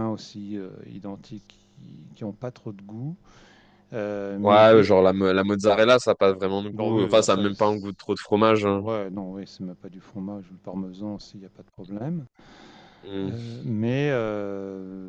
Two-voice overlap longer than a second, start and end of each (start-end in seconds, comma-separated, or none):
6.7-8.0